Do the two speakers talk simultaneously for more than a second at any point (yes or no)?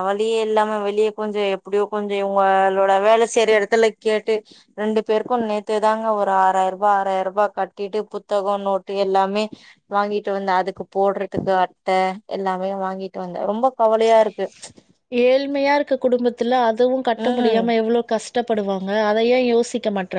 no